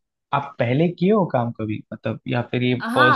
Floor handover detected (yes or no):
yes